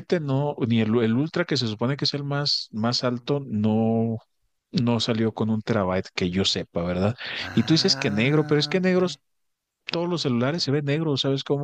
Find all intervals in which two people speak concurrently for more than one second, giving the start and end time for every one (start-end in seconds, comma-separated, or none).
7.5-9.0